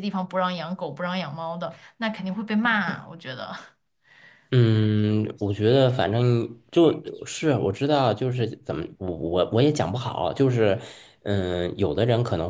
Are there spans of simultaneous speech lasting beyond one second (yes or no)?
no